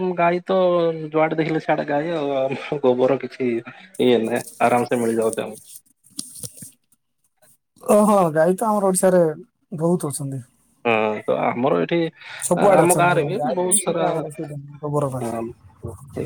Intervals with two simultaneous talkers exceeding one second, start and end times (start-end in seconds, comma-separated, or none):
12.7-15.2